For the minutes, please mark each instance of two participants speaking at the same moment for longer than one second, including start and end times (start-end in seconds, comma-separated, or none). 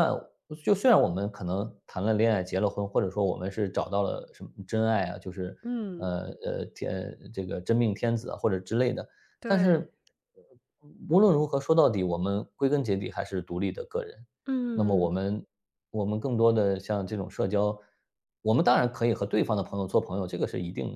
none